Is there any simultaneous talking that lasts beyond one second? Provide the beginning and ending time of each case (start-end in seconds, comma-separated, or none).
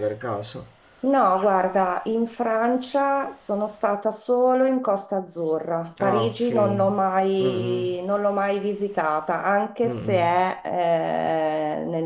none